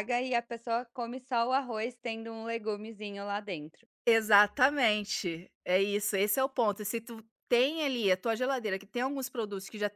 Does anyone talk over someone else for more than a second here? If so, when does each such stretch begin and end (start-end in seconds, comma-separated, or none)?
none